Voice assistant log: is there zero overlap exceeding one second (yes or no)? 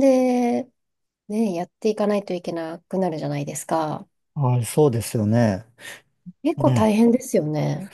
yes